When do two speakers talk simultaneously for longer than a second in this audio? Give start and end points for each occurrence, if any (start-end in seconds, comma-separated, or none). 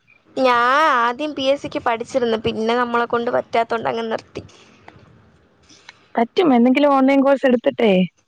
none